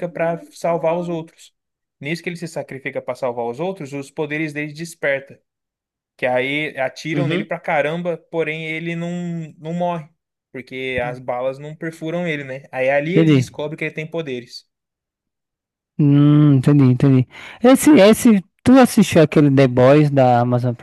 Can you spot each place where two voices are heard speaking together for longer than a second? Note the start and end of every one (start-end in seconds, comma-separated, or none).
none